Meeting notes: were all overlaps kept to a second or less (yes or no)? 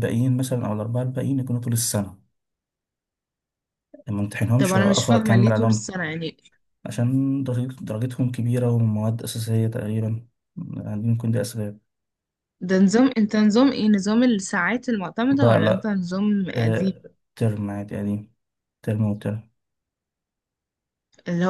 no